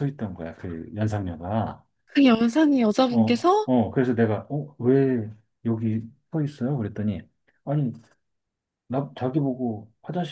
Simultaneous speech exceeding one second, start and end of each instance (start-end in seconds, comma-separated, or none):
none